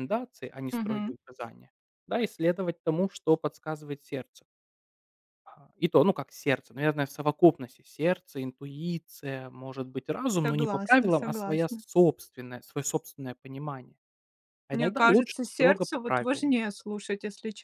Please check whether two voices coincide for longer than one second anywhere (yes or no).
yes